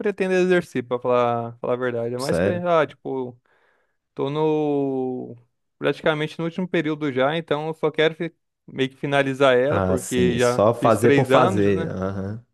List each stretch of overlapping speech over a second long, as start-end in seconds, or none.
9.7-11.9